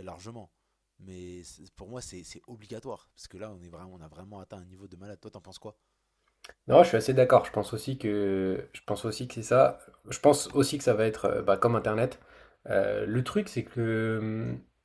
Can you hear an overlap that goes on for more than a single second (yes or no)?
no